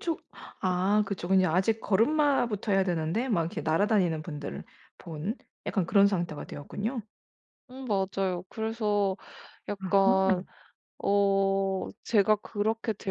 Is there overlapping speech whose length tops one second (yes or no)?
no